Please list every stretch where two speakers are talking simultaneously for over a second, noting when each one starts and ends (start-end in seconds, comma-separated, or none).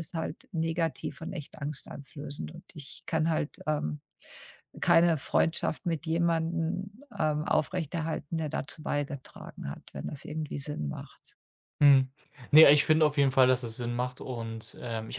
none